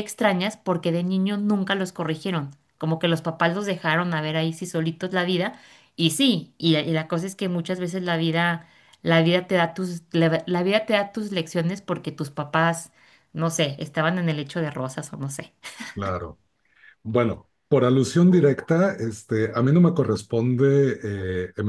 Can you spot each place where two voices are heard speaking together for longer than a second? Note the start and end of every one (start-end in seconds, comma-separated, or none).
none